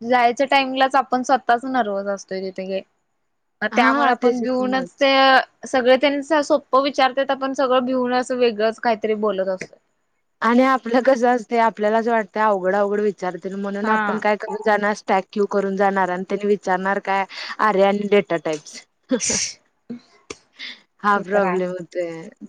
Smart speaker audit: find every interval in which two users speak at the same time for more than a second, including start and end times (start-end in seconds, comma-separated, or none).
3.8-5.0